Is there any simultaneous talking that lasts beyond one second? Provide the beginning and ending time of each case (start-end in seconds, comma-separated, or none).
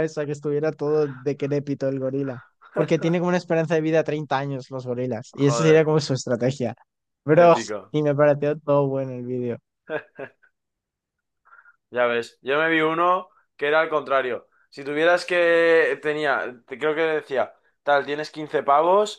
none